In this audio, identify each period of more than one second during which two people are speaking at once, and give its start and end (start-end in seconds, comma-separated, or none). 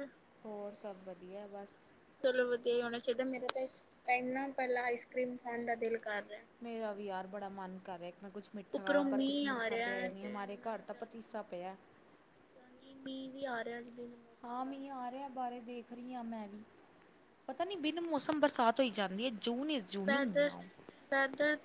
8.7-11.2